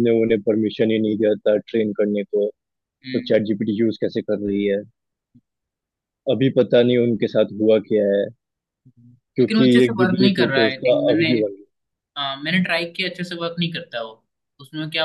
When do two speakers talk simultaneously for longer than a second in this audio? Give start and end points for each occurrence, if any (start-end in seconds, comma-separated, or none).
9.4-11.3